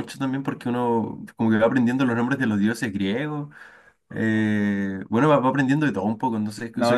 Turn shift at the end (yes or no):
yes